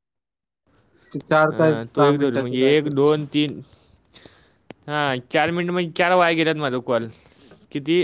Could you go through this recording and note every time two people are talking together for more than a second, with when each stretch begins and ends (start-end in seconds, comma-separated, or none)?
1.6-3.2